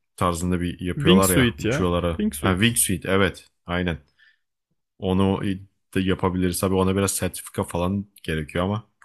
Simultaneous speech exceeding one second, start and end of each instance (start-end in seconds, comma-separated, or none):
1.0-2.8